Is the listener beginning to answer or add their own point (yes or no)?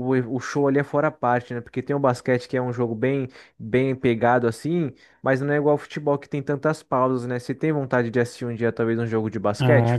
yes